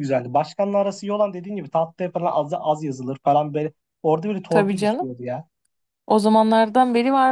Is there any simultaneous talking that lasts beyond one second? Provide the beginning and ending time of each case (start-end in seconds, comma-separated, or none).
none